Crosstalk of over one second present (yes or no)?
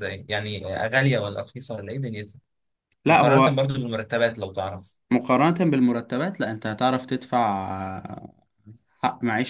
no